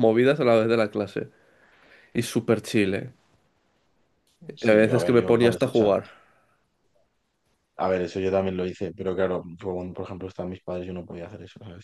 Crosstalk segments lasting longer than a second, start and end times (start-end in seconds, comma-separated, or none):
4.6-5.9